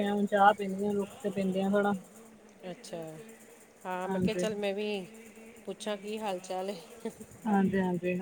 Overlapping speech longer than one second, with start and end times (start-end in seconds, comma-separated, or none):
none